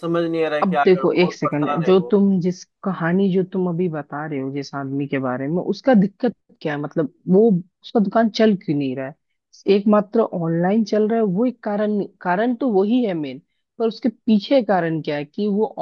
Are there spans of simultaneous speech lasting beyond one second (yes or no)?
yes